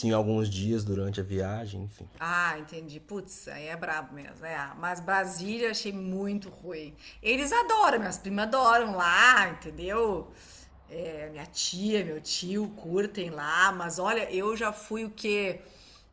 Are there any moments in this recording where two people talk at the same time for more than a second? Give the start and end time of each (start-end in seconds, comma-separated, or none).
none